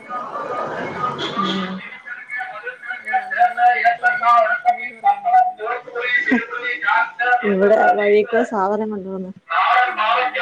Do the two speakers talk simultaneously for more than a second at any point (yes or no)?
no